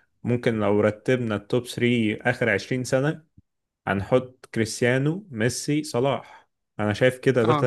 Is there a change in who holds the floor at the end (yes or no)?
no